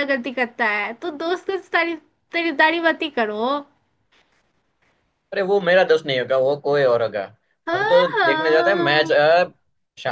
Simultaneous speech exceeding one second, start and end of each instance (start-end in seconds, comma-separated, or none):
7.7-9.2